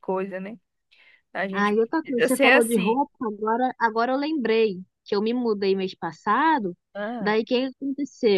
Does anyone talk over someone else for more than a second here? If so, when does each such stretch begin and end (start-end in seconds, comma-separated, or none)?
1.5-3.0